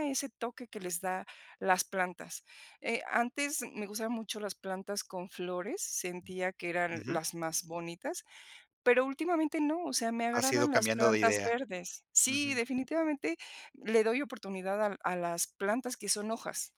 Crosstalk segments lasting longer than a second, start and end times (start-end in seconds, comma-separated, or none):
10.3-11.6